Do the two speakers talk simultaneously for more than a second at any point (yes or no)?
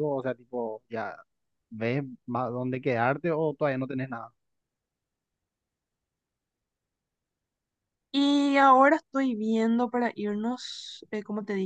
no